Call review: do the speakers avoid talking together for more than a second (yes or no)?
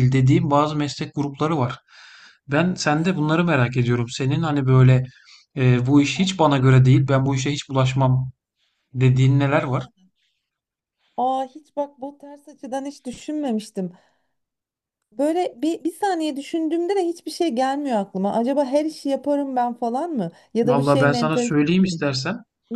no